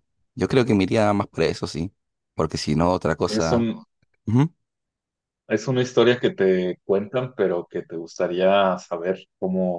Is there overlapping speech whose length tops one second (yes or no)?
no